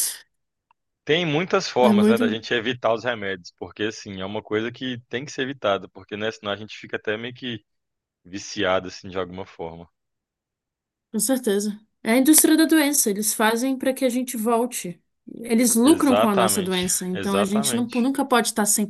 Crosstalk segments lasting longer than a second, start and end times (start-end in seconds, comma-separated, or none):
15.8-18.1